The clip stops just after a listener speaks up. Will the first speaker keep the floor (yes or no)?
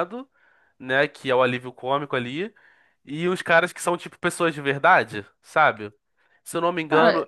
yes